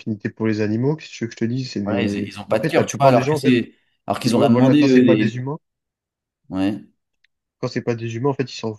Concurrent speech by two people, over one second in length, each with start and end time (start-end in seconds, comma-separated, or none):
1.8-3.6, 4.2-5.4